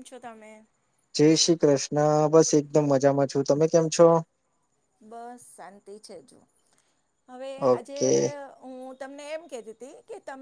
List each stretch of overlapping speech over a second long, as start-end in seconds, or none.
none